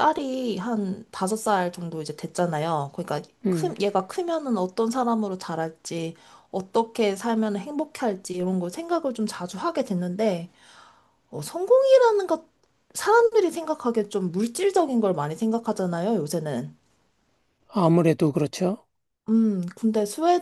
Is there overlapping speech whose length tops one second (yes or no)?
no